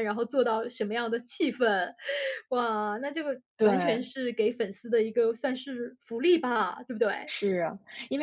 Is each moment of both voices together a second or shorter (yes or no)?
yes